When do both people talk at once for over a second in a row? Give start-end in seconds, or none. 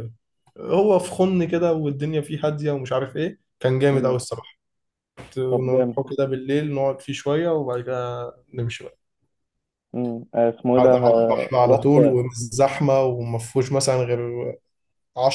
10.8-12.2